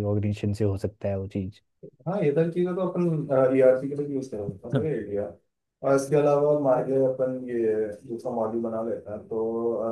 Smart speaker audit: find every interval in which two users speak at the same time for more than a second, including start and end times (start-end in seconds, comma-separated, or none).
none